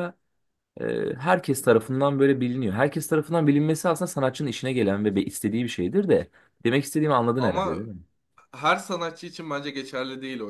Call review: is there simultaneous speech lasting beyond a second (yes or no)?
no